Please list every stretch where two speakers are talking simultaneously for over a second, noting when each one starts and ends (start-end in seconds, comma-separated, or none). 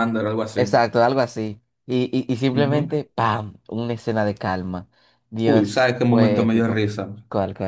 5.4-6.9